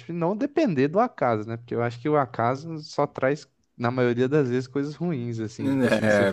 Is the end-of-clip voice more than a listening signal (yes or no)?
yes